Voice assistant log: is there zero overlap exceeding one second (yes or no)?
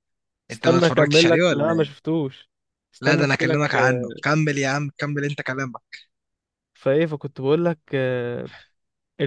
no